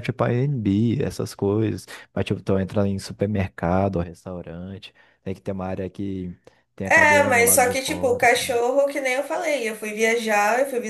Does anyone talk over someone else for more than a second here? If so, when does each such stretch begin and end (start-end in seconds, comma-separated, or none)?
6.8-8.6